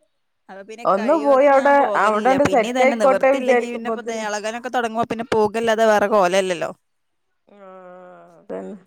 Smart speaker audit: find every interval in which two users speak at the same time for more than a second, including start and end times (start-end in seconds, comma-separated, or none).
2.0-4.2